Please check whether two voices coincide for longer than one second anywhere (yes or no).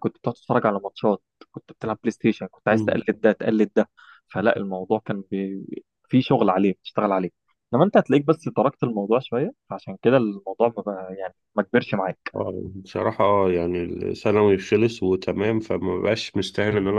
no